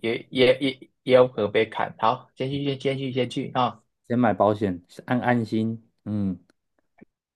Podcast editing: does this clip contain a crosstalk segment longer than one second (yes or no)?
no